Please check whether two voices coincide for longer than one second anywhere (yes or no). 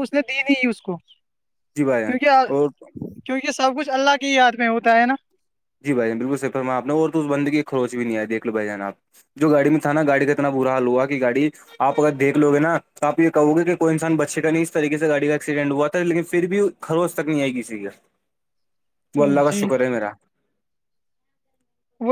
no